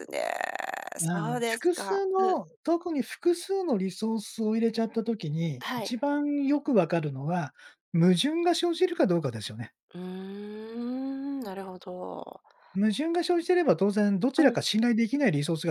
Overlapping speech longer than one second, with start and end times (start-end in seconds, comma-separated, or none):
1.0-2.3